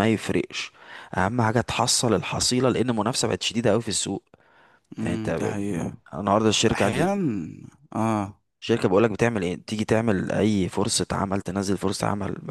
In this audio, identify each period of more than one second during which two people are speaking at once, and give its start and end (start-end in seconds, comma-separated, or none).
none